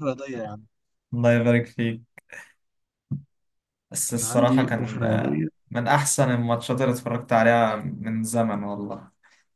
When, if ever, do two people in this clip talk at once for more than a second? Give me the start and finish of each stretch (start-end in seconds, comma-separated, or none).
4.1-5.5